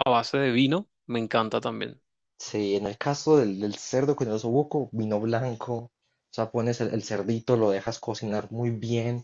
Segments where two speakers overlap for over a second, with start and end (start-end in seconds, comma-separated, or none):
none